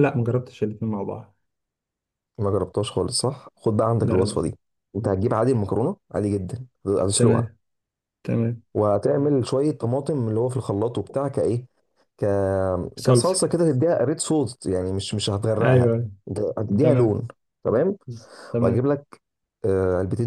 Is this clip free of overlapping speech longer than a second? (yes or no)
yes